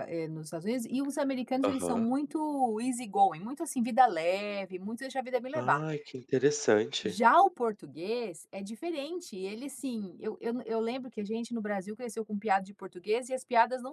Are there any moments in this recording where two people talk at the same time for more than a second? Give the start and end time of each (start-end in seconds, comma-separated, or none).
none